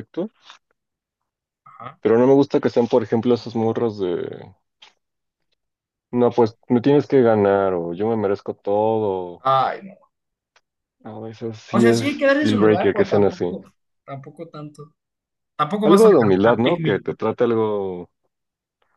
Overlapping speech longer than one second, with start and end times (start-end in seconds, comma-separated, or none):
11.7-13.4, 15.8-17.1